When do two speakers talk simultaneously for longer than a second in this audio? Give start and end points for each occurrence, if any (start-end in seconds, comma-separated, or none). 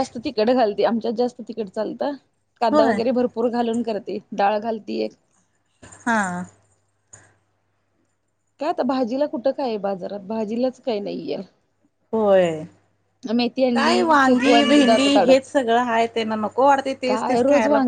13.7-15.5